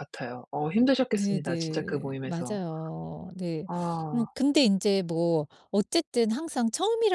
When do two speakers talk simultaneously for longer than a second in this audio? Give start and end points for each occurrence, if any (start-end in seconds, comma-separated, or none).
1.1-2.6